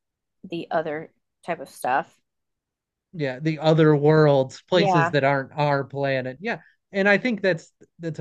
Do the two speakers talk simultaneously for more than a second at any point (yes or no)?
no